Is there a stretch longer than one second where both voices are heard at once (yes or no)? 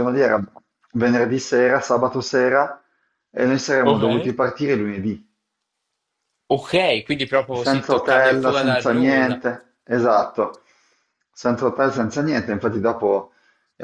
yes